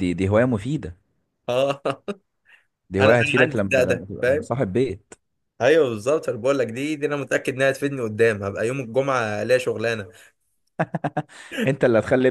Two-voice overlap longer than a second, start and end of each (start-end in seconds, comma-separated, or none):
3.0-4.5